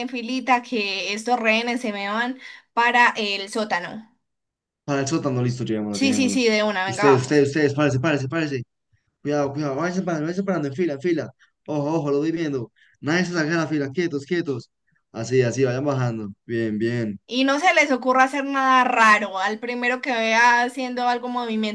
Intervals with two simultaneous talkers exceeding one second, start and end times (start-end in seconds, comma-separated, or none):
5.9-7.5